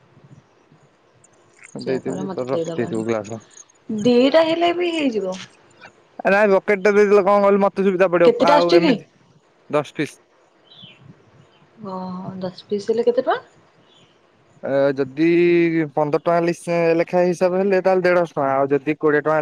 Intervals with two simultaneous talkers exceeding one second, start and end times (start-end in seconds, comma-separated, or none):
1.8-3.4